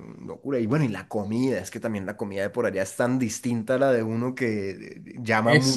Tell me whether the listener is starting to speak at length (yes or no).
yes